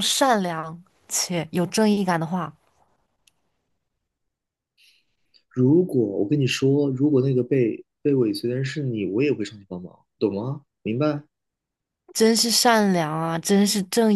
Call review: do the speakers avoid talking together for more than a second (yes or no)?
yes